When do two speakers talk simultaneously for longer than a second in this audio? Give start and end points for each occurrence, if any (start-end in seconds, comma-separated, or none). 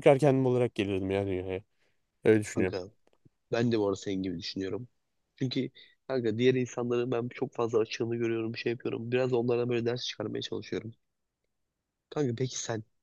none